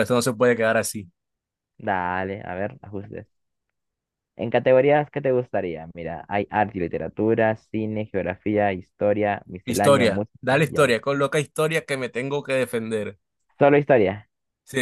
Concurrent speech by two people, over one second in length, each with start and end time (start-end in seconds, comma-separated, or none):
9.6-11.0